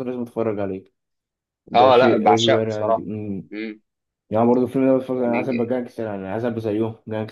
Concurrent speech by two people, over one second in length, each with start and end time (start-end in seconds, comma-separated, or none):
1.7-3.1